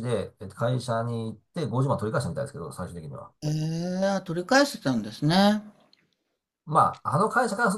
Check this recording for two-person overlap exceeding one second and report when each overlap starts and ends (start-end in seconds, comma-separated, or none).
none